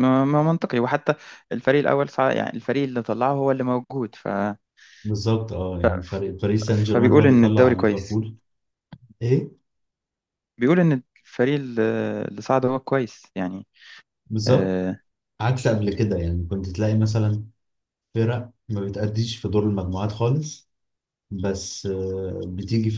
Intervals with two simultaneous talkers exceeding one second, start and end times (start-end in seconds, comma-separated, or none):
6.7-8.2